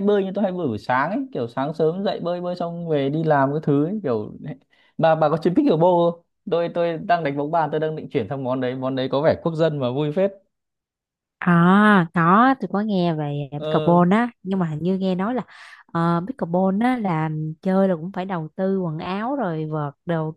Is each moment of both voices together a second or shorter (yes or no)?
yes